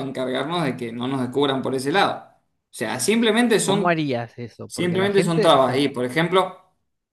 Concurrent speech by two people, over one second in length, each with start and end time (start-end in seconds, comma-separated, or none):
4.7-5.9